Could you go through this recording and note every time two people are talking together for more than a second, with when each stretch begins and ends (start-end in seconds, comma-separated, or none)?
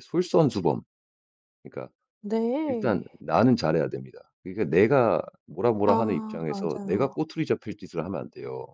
5.8-7.1